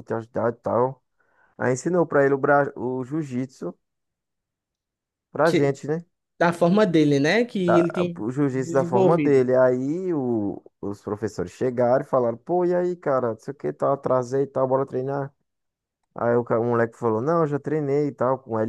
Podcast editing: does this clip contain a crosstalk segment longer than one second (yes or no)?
yes